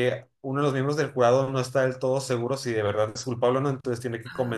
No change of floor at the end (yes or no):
yes